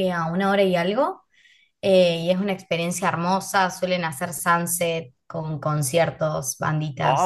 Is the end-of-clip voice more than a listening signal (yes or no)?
yes